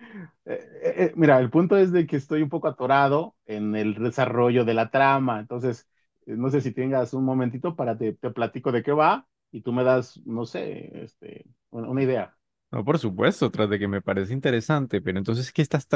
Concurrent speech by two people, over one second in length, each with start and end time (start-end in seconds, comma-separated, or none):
none